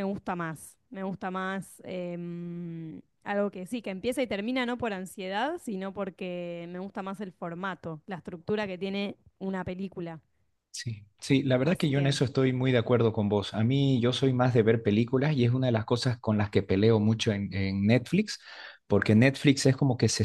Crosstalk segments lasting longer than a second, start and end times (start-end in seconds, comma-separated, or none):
none